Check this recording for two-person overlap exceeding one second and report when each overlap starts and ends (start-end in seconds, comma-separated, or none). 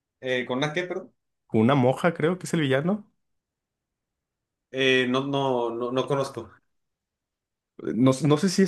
none